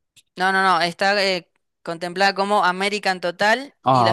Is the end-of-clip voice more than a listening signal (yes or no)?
no